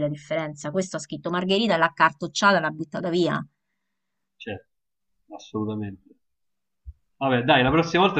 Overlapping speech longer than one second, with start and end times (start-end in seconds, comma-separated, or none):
none